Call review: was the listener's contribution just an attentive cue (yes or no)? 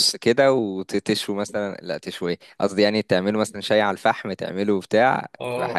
no